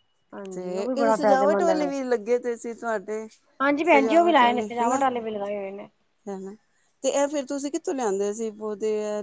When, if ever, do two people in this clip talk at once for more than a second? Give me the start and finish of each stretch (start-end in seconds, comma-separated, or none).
0.5-1.9